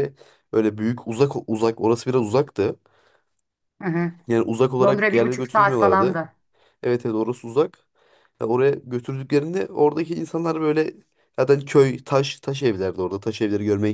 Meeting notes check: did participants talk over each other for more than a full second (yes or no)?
yes